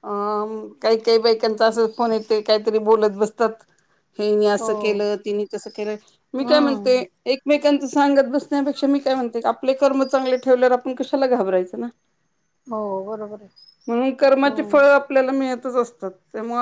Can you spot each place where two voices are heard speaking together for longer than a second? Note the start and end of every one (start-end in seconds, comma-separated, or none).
none